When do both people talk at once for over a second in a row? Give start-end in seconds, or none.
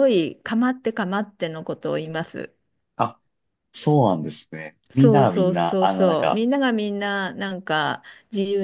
4.9-6.5